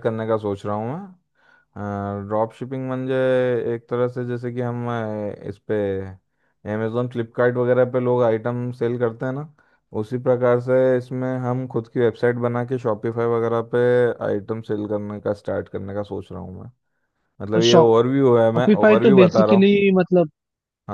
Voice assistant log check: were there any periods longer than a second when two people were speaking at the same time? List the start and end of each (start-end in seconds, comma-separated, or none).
18.2-19.7